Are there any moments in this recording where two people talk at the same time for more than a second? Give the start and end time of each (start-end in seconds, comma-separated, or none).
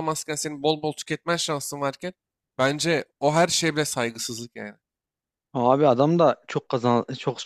none